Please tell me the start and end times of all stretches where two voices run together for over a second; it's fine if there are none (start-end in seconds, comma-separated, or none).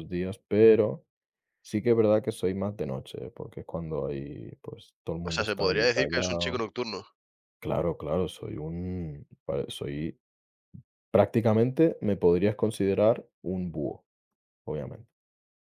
5.2-6.6